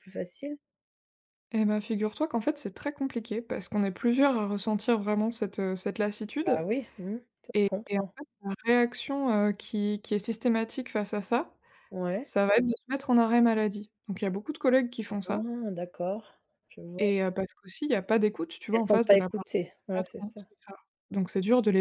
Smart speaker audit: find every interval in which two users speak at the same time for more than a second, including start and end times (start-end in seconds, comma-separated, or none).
18.7-20.4